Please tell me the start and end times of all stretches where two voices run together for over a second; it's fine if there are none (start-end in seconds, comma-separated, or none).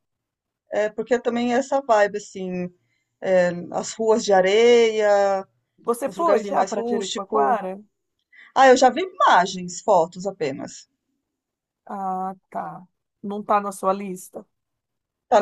6.0-7.6